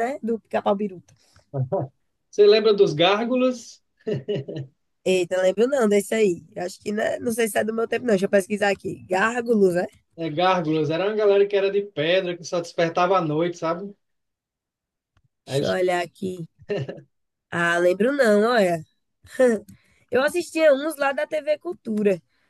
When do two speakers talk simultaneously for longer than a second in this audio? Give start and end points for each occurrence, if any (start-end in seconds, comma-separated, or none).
none